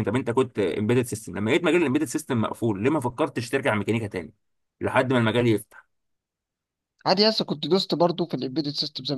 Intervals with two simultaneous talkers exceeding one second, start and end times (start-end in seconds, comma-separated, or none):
none